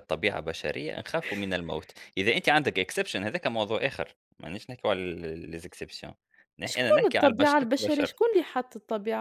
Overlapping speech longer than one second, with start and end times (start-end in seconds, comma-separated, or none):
6.7-8.2